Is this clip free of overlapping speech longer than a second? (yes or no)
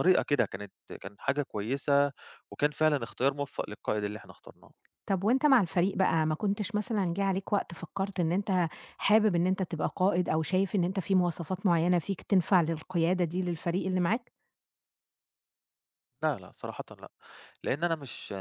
yes